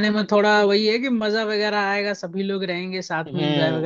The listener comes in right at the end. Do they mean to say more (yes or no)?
yes